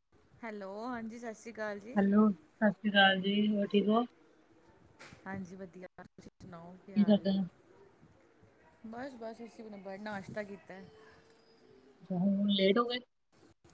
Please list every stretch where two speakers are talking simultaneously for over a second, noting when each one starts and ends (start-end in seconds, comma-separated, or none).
none